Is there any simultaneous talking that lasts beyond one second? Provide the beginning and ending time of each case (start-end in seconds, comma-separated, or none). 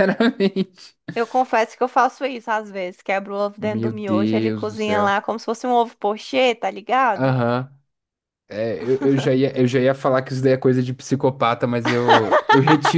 3.6-5.1